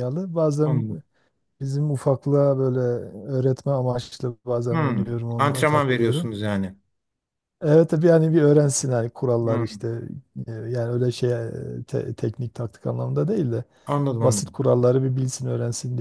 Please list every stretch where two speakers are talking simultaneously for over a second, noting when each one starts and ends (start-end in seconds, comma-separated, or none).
4.7-6.3